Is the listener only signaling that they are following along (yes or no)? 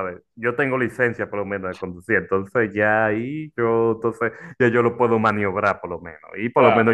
yes